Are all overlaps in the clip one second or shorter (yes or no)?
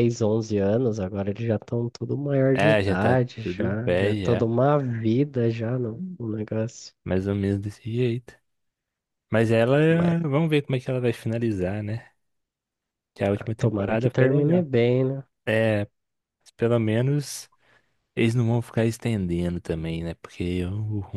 no